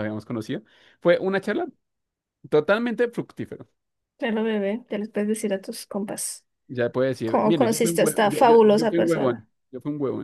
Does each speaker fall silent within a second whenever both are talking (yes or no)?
no